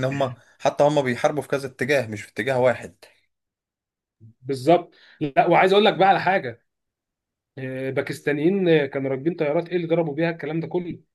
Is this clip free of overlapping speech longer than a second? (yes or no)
yes